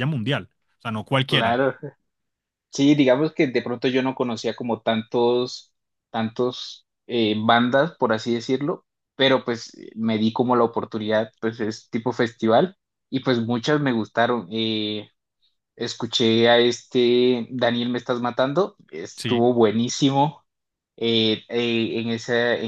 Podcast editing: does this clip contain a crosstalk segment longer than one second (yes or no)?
no